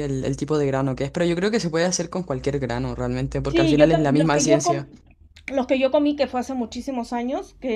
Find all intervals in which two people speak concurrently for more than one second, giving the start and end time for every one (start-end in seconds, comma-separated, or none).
3.5-4.9